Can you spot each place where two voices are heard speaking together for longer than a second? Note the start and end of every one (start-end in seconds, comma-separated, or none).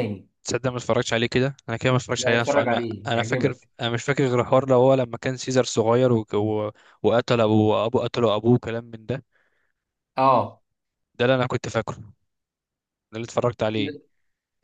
2.2-3.7